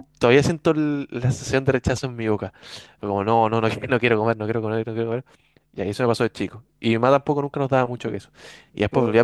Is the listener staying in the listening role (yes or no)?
yes